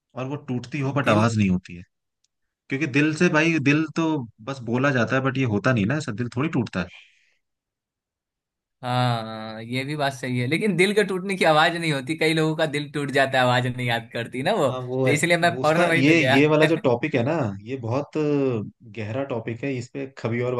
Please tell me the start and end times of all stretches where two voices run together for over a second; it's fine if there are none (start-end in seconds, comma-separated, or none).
14.7-16.4